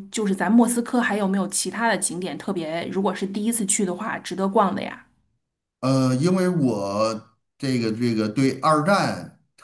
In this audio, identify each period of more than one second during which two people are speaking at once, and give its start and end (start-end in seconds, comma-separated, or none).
none